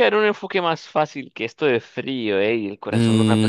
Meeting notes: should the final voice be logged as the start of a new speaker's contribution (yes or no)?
yes